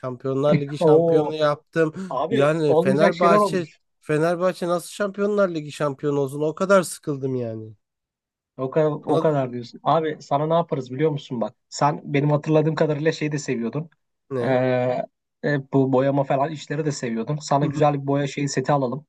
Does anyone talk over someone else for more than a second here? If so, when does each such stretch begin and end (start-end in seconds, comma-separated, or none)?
2.3-3.6